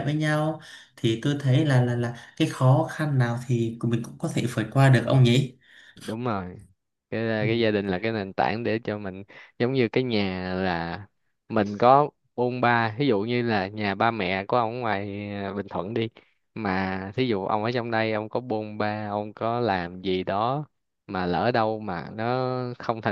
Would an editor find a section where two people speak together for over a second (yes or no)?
no